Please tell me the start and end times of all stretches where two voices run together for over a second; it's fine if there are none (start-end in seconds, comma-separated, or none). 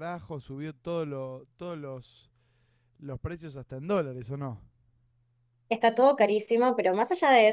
none